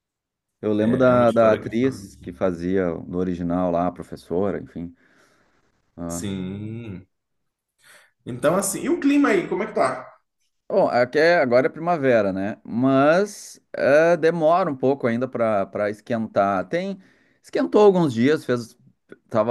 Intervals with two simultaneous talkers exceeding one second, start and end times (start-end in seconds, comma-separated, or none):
0.8-2.2